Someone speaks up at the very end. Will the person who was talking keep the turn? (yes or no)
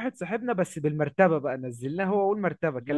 yes